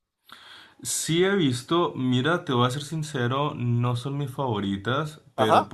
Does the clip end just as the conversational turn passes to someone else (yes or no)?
no